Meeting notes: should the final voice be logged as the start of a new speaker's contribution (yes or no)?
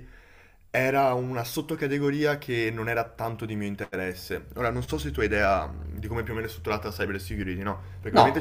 no